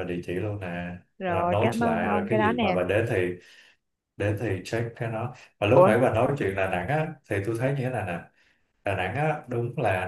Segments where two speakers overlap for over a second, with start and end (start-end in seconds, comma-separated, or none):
1.2-2.8